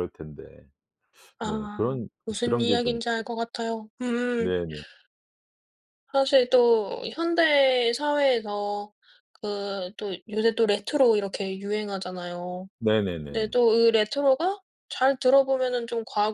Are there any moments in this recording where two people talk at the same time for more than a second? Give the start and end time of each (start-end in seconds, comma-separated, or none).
1.4-3.2